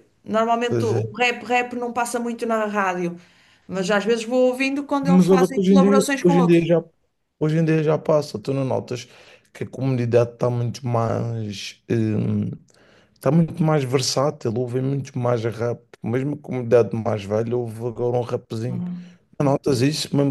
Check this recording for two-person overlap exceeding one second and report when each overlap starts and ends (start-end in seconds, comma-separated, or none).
5.0-6.7